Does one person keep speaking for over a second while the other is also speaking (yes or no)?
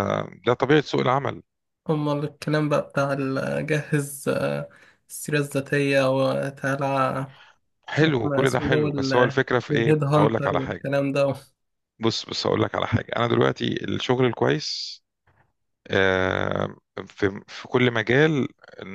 yes